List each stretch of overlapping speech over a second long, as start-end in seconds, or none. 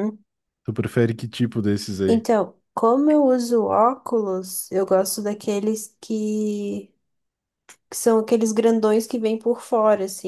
none